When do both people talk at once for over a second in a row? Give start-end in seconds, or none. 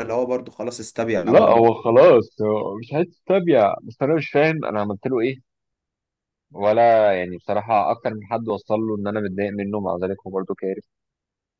none